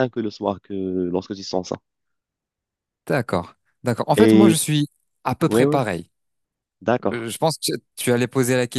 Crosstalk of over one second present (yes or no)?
no